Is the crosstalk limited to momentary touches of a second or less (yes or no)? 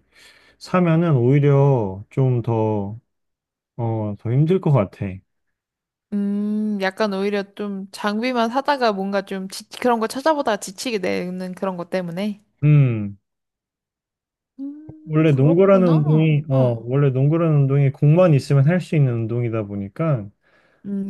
no